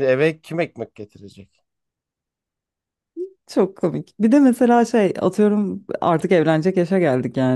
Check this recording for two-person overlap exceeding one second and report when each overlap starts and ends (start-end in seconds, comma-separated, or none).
none